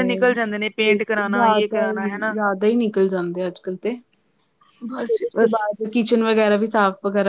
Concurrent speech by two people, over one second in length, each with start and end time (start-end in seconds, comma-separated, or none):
0.9-2.3